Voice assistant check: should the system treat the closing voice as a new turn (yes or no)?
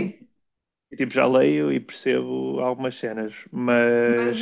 yes